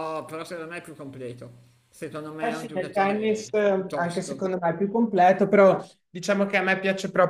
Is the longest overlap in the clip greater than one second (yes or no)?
yes